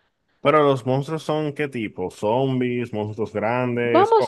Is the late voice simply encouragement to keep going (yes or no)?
no